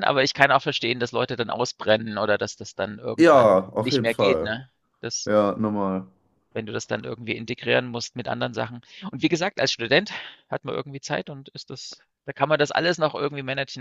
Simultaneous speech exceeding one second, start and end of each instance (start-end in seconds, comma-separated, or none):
3.2-4.5